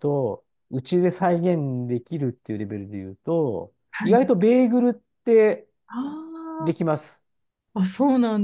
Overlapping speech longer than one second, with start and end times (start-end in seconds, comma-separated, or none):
none